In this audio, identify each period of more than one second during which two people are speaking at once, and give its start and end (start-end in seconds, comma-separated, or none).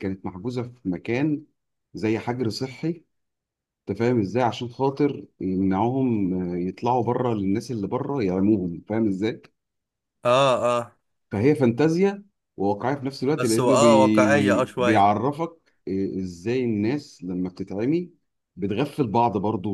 13.4-15.1